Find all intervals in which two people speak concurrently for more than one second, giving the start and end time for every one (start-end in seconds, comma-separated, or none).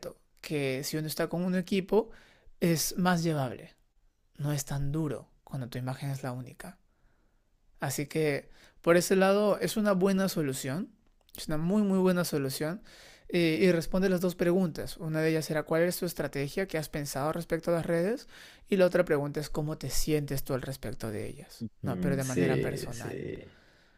21.8-23.3